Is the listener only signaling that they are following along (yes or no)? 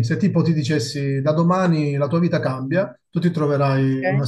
yes